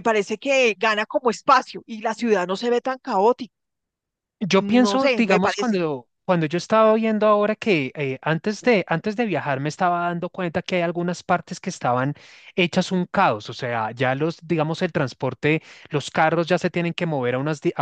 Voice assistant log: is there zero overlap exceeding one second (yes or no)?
no